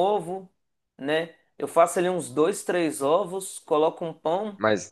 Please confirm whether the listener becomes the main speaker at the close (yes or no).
yes